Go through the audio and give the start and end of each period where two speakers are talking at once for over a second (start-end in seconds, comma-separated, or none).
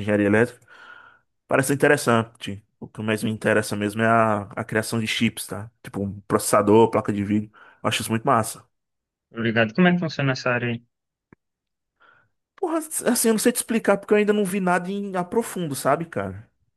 none